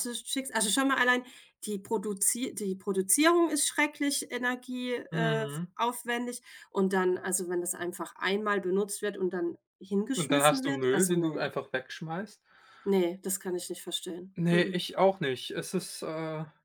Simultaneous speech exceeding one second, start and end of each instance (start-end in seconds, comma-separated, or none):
10.2-11.4